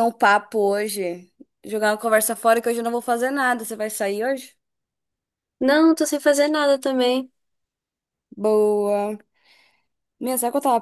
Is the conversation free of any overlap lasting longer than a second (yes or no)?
yes